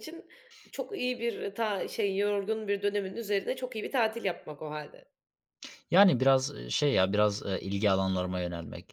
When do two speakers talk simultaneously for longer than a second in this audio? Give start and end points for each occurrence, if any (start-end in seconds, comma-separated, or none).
none